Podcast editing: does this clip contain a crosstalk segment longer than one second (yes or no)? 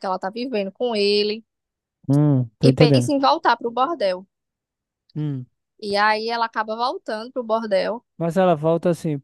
no